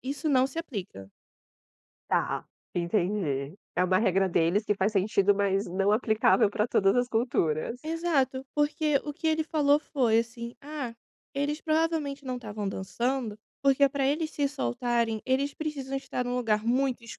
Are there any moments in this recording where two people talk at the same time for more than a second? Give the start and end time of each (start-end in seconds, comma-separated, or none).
none